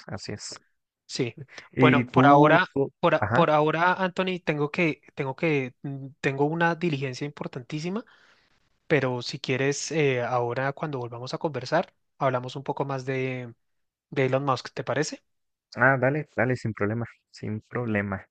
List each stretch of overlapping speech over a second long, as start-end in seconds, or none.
1.8-3.5